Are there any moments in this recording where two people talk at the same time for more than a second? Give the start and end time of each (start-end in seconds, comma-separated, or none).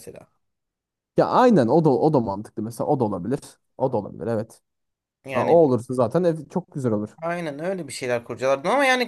none